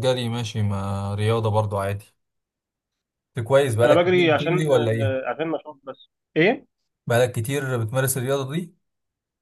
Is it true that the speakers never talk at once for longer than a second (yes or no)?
no